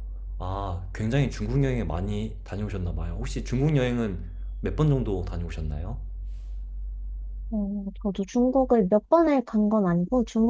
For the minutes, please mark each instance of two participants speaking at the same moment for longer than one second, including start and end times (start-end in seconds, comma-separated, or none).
none